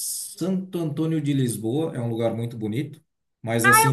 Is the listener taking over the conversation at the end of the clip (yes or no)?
yes